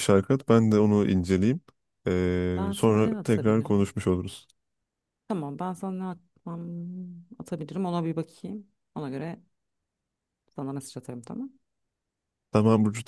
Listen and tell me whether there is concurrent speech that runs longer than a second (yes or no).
yes